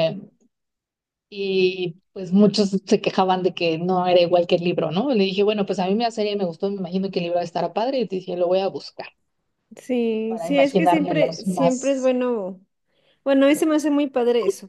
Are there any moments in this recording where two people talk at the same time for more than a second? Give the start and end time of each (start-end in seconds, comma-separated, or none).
10.3-12.1